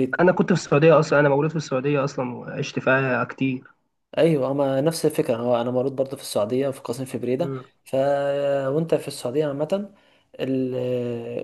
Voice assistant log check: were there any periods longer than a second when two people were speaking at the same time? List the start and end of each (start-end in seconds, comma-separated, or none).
none